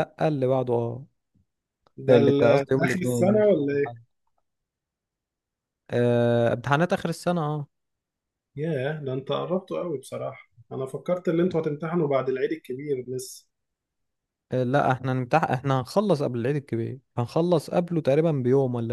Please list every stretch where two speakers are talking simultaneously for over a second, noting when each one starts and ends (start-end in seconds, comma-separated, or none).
2.1-3.9